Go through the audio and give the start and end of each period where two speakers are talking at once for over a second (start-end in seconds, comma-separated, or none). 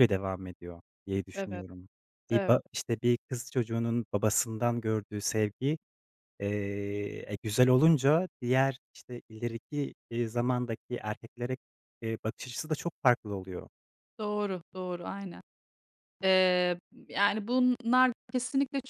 none